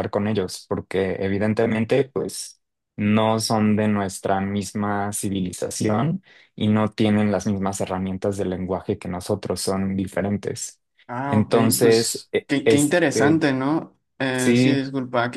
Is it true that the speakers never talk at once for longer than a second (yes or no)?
no